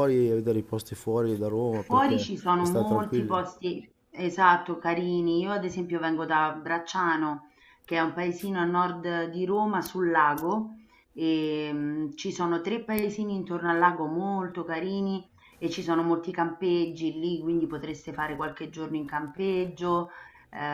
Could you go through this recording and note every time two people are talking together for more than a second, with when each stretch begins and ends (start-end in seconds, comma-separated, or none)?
1.7-3.4